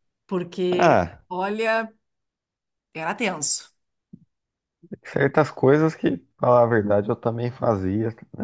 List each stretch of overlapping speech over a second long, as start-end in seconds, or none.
none